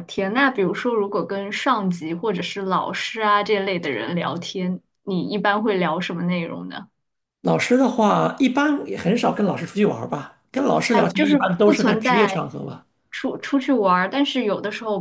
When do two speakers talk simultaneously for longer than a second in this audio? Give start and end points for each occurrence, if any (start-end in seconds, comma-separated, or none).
10.9-12.4